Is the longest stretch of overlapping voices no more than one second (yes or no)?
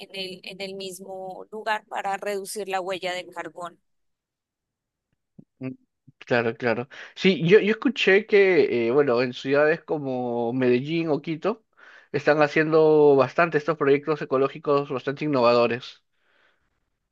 yes